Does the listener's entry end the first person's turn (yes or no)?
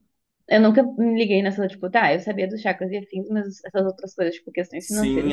yes